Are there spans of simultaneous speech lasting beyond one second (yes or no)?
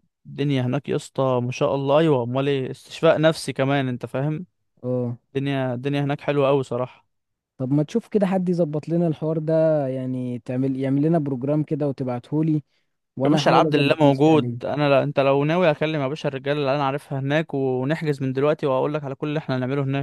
yes